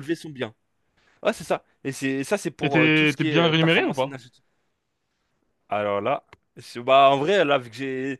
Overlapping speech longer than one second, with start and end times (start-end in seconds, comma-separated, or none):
2.6-4.2